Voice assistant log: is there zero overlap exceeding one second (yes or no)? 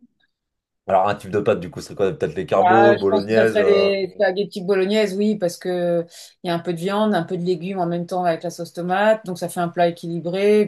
no